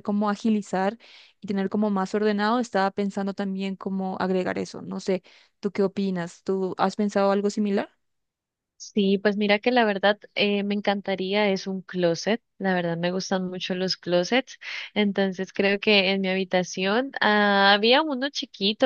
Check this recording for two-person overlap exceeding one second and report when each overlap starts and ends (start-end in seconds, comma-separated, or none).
none